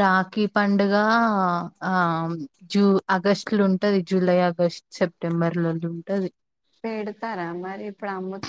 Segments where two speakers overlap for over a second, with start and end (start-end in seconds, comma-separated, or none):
none